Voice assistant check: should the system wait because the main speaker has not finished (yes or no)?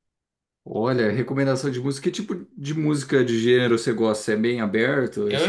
no